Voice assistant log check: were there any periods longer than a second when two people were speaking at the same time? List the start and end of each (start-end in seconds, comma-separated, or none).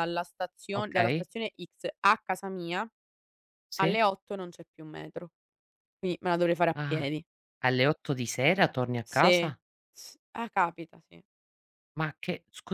none